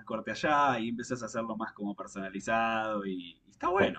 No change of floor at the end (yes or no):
no